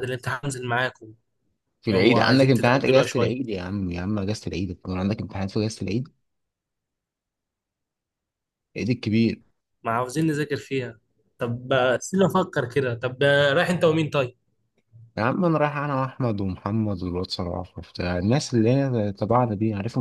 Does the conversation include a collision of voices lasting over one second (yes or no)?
yes